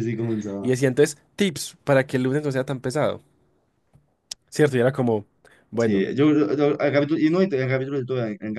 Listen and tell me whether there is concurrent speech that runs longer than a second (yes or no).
no